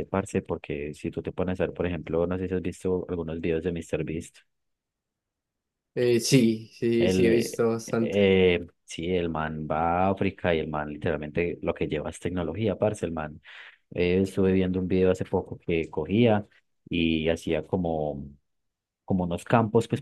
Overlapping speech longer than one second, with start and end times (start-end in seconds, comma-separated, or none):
7.0-8.2